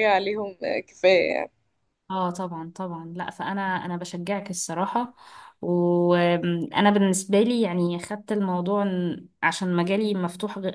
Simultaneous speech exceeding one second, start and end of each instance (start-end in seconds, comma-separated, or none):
none